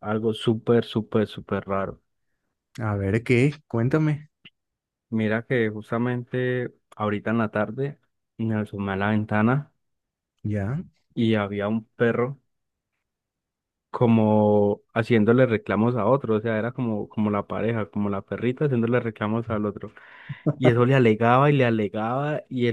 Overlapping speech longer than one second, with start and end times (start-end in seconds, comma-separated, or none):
none